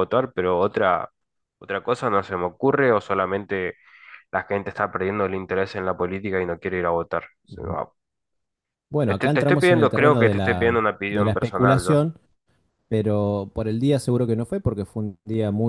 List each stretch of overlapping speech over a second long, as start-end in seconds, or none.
9.1-12.0